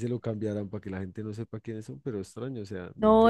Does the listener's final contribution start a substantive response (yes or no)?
yes